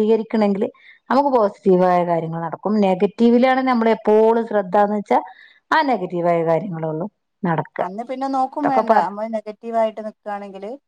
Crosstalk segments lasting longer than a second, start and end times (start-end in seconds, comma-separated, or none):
none